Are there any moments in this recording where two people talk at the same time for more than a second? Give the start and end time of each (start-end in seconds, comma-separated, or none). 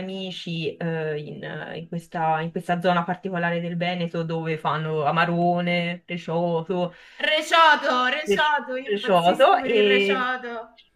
8.2-10.3